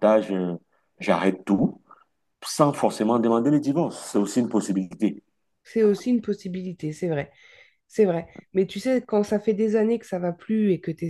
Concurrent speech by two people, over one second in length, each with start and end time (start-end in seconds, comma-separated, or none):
none